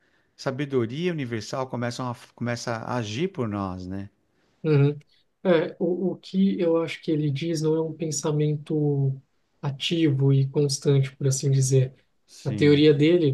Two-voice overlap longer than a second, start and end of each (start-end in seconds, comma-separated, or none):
none